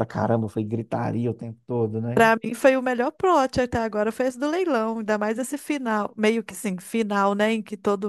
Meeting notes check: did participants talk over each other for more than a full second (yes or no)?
no